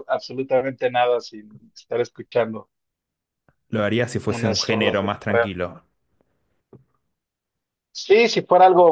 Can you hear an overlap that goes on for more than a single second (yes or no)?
yes